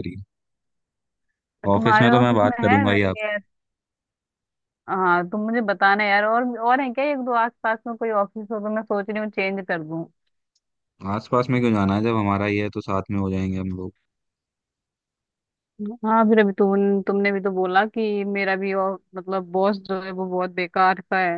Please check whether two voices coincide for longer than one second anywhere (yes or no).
yes